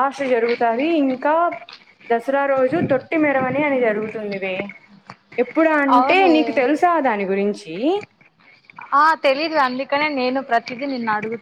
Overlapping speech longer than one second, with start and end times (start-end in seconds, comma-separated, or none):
none